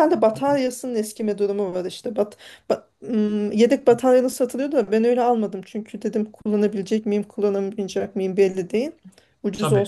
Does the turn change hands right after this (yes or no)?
no